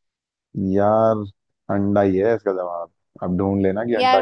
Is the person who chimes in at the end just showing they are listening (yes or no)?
no